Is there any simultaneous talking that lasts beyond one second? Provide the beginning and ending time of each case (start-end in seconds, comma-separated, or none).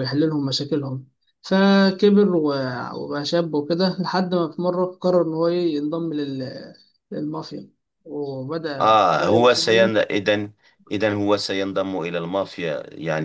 8.8-10.1